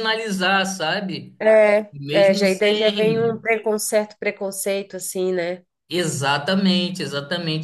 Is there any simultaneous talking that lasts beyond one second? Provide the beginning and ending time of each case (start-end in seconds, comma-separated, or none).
1.9-3.4